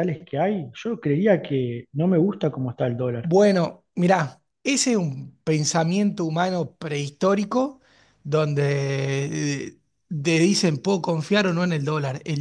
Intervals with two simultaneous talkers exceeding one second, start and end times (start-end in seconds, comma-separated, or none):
none